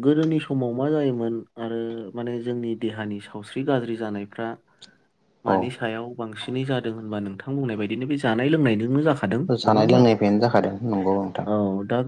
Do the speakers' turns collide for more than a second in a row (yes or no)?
no